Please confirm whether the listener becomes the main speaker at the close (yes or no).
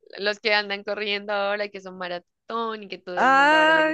yes